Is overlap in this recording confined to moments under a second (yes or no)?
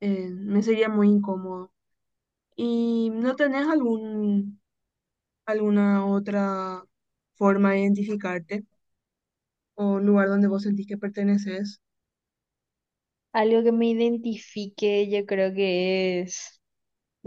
yes